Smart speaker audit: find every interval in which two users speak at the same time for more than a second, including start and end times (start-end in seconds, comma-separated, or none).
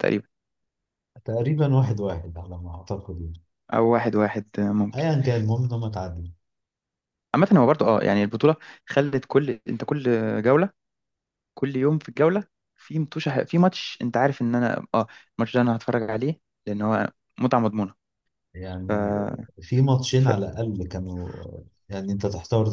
none